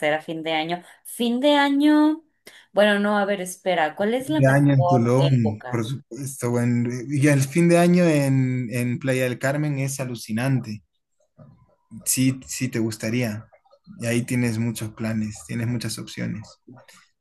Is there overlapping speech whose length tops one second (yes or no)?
yes